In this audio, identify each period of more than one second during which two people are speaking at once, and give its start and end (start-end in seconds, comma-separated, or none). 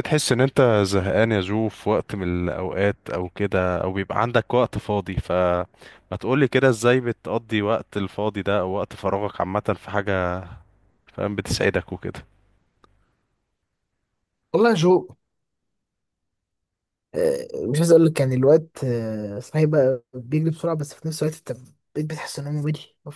none